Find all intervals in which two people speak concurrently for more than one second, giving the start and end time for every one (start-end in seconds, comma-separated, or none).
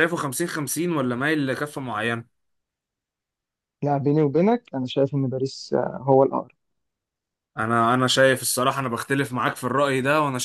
none